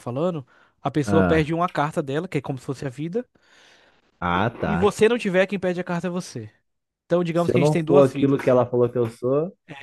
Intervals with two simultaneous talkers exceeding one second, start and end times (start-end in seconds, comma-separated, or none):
7.3-8.7